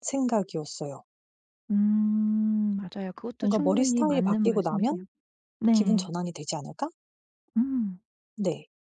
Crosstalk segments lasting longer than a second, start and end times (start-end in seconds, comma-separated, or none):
3.4-5.0